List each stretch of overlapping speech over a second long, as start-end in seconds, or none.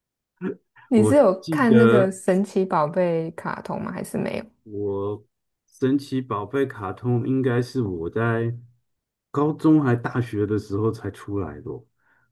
0.9-2.1